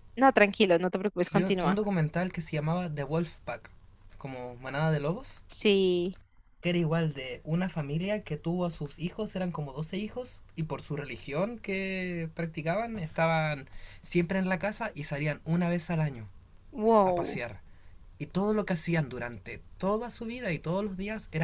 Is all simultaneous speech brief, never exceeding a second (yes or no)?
yes